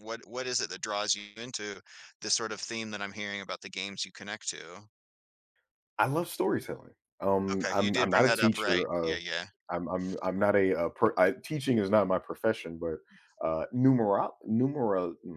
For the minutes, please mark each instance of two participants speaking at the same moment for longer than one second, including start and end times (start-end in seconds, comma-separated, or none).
7.5-9.2